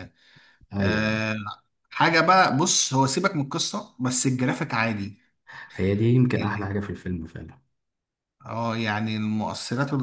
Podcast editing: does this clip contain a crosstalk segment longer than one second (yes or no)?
no